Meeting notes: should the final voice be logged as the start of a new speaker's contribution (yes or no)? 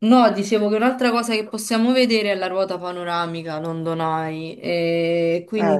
no